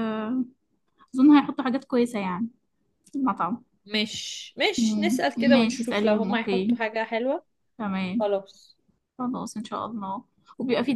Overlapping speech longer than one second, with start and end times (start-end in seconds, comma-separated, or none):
4.8-6.8